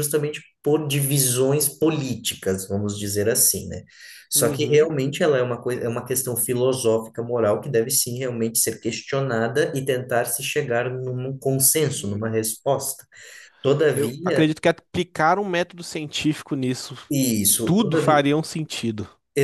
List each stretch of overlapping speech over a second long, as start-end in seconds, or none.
none